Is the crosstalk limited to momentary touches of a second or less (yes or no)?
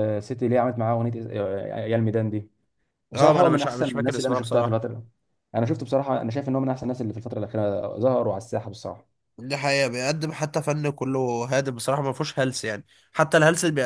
no